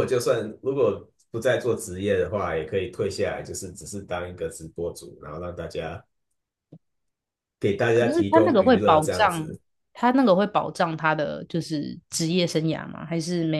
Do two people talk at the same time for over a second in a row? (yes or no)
yes